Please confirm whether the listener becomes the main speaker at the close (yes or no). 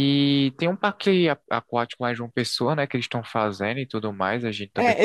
yes